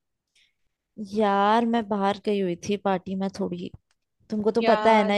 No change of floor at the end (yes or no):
yes